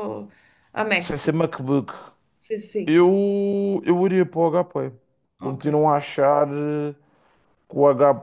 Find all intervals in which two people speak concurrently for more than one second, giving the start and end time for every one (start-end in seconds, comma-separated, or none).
none